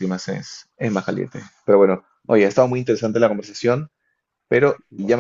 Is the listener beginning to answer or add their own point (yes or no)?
no